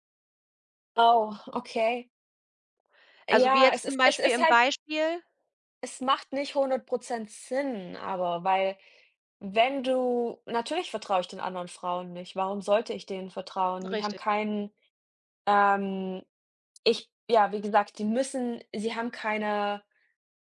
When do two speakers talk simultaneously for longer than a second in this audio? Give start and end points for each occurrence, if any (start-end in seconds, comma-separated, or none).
3.3-4.6